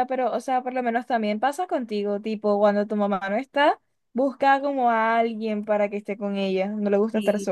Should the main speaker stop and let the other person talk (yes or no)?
yes